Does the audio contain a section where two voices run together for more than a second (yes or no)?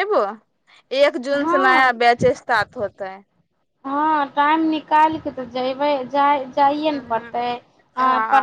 no